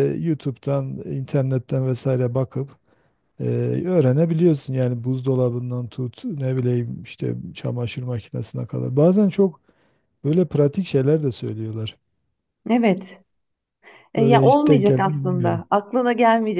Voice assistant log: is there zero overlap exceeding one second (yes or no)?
no